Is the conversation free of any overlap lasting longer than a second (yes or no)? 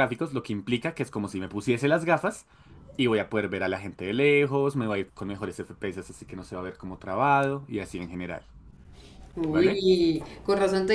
yes